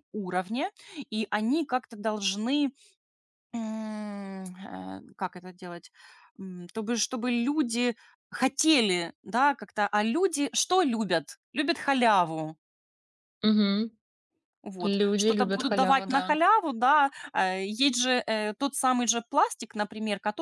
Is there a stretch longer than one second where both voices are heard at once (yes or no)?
yes